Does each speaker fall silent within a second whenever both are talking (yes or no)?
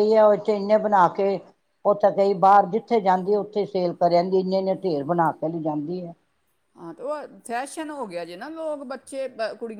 yes